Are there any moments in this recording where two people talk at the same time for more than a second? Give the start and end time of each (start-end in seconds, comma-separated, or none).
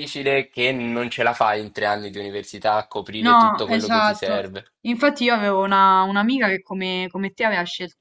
3.2-4.4